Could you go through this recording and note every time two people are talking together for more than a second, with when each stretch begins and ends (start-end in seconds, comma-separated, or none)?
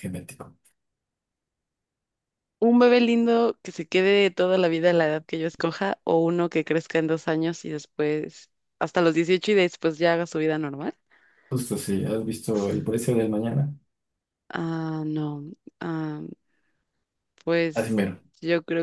none